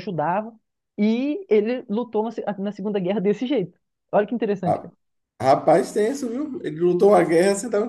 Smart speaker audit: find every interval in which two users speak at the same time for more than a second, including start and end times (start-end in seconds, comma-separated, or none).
none